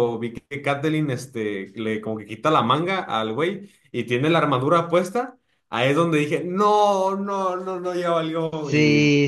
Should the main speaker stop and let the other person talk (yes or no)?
yes